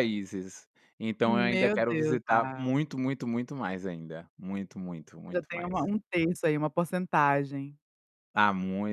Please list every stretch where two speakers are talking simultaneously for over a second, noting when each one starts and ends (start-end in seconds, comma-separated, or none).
1.2-2.8